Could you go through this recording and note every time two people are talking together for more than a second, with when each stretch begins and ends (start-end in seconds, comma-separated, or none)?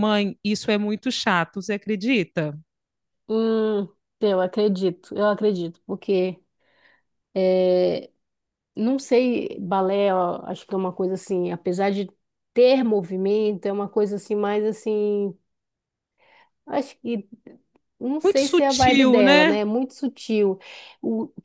18.2-19.6